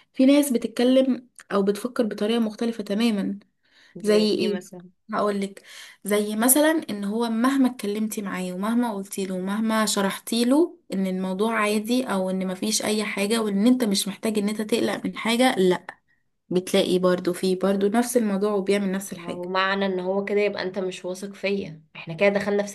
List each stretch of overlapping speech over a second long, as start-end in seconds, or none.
none